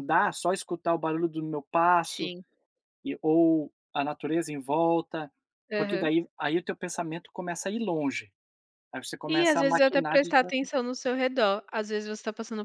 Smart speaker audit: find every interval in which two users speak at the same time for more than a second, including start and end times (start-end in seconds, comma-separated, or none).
9.3-10.7